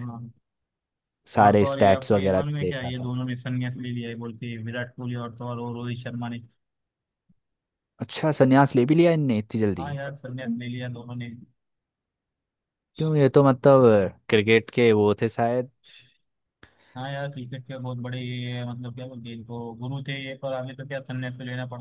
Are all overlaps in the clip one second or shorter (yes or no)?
no